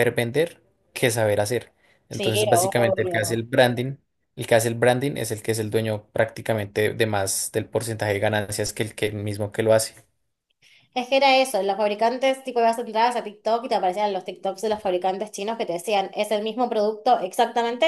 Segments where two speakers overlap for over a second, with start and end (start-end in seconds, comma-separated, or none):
2.1-3.4